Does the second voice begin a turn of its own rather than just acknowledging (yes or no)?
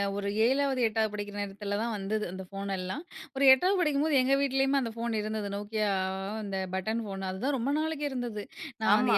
no